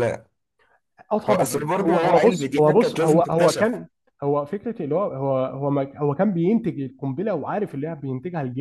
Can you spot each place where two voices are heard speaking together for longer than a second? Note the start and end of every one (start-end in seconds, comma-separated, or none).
1.3-3.8